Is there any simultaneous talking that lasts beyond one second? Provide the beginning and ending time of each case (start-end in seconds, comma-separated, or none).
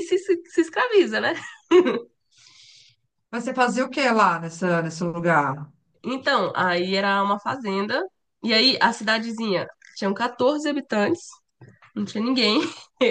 none